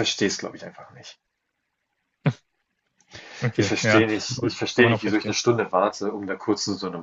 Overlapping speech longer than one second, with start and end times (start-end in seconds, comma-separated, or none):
3.6-5.4